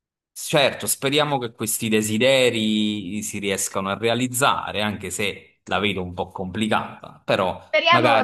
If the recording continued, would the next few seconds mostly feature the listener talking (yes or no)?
yes